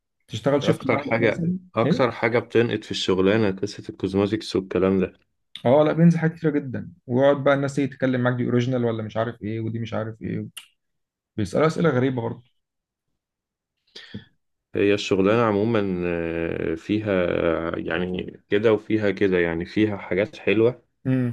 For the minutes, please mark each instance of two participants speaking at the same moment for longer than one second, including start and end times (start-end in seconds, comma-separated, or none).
0.6-2.1